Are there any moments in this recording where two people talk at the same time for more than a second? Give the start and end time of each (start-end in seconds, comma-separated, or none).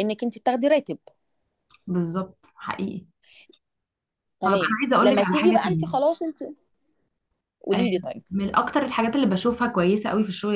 4.4-6.0